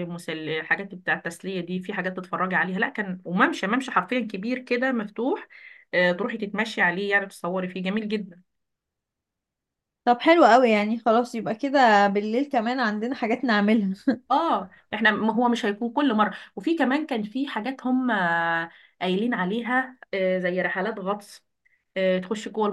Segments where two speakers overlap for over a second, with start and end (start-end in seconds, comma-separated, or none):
none